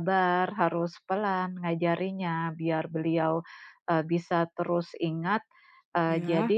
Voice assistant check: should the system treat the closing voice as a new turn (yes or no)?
no